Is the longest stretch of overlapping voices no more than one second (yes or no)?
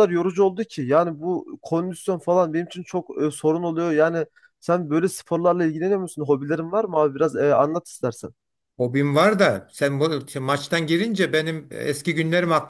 yes